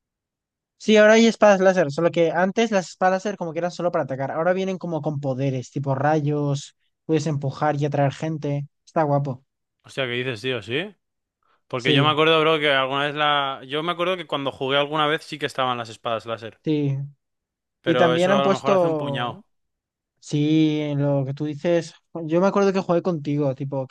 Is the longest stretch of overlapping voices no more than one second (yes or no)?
no